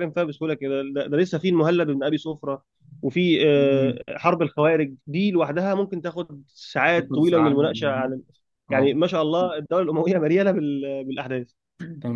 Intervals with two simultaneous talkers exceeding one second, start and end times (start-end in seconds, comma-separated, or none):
none